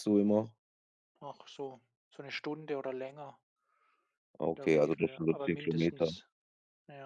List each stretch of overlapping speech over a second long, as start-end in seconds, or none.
4.4-6.1